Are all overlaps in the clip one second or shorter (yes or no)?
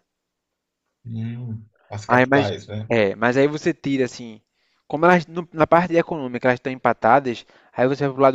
yes